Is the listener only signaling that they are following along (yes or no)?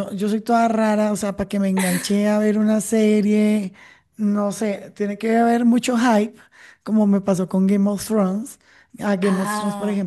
yes